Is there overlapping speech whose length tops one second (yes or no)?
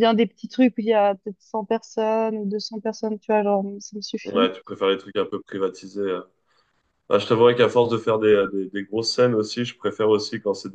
no